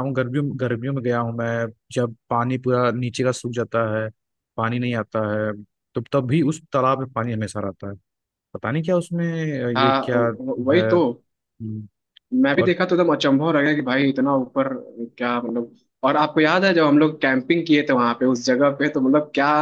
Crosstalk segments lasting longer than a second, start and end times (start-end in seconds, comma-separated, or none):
none